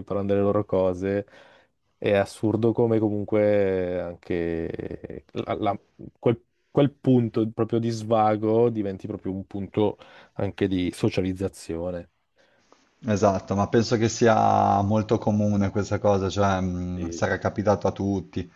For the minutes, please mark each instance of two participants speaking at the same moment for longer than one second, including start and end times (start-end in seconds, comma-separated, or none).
none